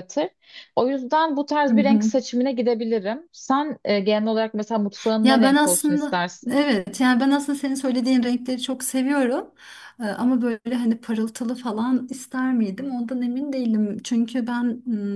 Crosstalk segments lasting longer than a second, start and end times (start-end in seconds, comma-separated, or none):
5.2-6.6